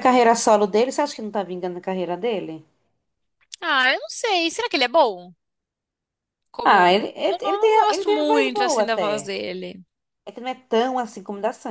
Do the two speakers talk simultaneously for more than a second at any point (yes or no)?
yes